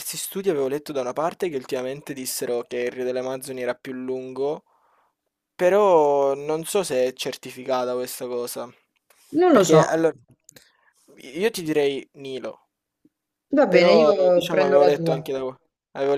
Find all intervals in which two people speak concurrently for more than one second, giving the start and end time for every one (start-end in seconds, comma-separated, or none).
13.7-15.3